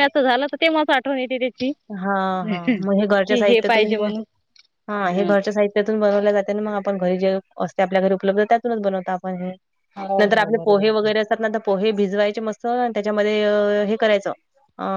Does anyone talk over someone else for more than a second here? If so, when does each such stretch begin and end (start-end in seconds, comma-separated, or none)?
2.5-4.1